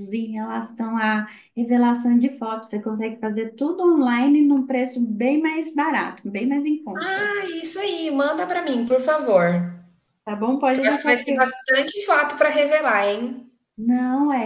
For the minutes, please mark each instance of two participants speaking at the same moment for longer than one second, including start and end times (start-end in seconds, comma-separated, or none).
none